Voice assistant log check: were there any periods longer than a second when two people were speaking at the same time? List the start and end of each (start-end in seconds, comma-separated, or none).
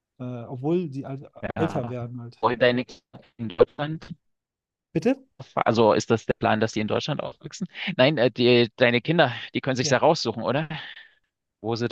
none